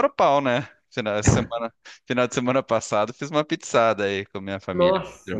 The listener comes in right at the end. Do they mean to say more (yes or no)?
yes